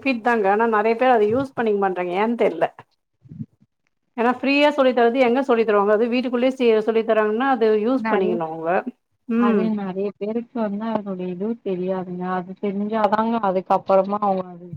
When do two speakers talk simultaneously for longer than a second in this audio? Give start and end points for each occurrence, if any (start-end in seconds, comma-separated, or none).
none